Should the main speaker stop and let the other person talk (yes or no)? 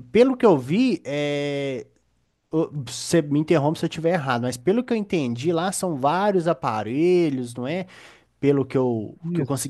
no